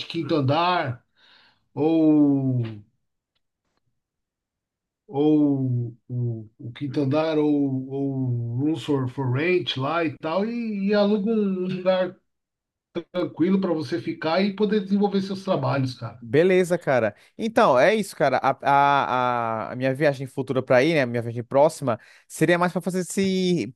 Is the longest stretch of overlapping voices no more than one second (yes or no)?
yes